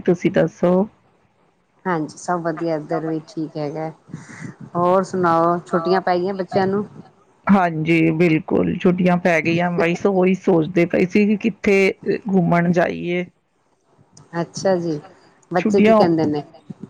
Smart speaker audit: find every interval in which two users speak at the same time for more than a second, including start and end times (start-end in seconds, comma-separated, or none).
none